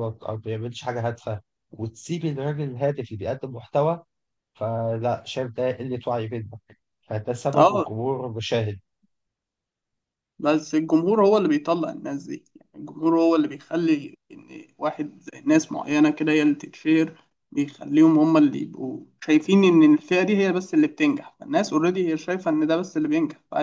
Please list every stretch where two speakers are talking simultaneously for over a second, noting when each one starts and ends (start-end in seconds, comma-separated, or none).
none